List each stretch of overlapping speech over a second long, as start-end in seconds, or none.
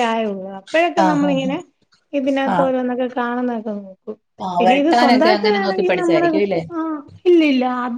4.6-6.3